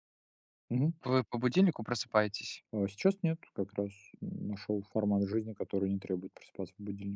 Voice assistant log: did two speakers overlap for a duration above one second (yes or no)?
no